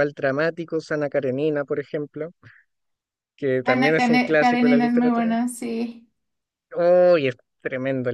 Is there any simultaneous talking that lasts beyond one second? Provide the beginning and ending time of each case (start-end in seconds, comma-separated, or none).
3.6-5.3